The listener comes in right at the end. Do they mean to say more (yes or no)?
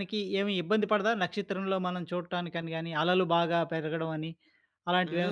yes